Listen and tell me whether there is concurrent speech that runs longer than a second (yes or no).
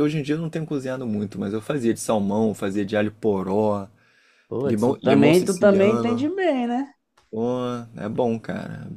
yes